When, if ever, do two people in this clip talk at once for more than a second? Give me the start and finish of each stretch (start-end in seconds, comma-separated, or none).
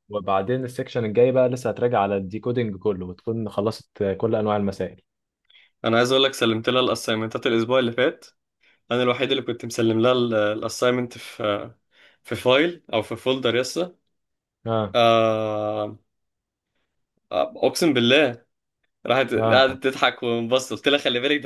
none